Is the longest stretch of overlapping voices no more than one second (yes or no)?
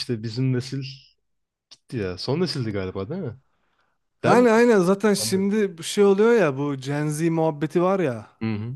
yes